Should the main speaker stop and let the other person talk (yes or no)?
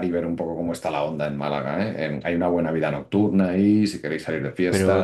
yes